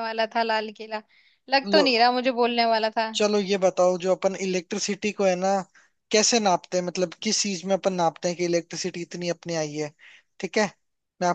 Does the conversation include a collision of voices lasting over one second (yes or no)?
no